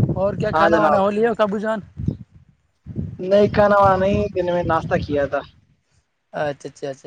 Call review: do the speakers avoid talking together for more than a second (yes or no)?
yes